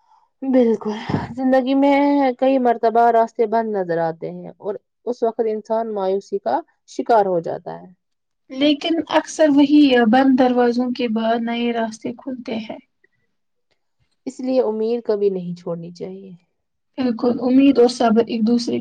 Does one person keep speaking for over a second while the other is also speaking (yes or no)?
no